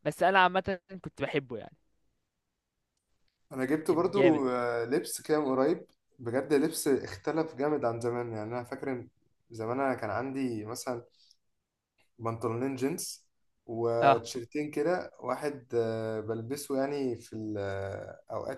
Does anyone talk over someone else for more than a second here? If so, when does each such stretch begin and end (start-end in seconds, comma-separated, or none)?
none